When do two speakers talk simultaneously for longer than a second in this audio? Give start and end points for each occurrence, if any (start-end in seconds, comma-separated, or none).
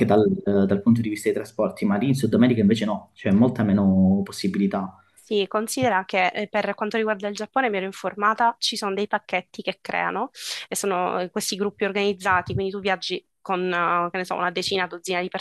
none